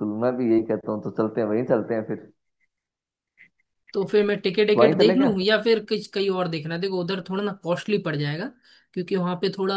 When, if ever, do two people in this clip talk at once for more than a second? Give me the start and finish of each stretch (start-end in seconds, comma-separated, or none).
none